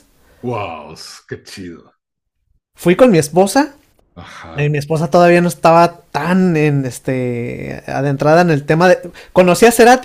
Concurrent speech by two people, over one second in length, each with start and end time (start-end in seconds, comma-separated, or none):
none